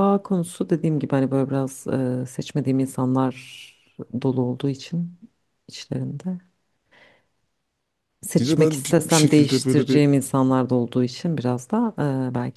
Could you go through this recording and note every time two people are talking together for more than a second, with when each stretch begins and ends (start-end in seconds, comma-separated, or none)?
8.4-10.0